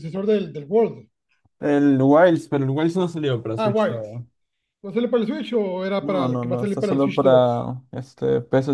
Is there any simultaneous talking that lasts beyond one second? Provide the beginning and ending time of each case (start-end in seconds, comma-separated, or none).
6.0-7.5